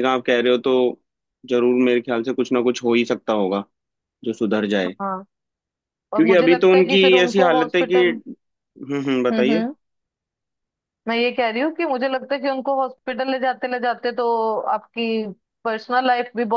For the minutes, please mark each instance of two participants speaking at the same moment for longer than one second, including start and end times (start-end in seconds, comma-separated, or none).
6.2-8.2